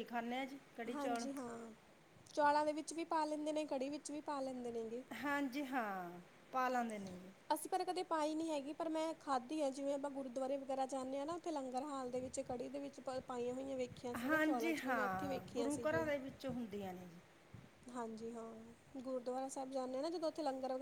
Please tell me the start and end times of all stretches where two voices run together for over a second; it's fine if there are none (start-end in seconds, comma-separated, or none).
14.3-16.1